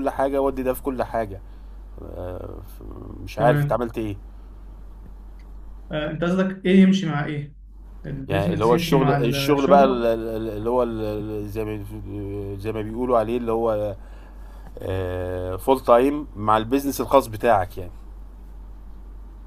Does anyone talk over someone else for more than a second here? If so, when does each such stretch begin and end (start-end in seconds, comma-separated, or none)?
8.3-10.0